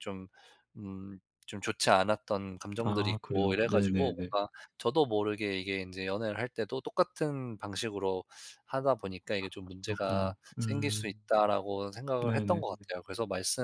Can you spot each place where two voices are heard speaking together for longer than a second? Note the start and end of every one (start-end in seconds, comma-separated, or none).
2.8-4.3, 9.4-11.2